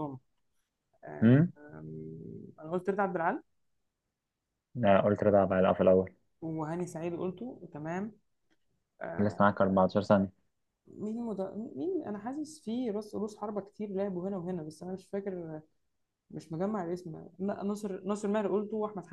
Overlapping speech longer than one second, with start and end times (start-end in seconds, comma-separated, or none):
none